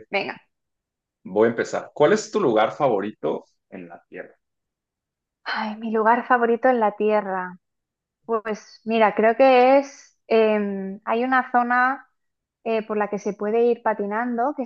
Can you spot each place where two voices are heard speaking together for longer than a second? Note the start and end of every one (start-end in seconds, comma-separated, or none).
none